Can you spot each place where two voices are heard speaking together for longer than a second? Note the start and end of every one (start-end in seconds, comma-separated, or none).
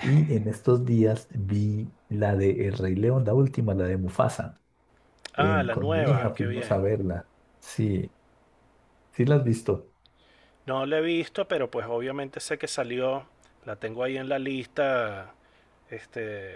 5.4-6.8